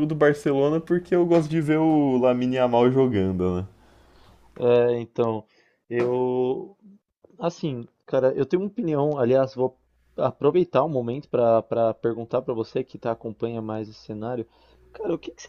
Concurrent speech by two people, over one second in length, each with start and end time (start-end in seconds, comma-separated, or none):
none